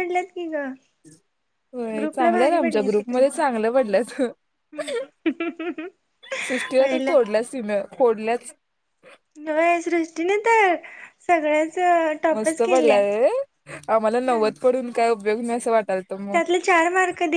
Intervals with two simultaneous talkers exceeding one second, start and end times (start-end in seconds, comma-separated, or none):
2.0-3.4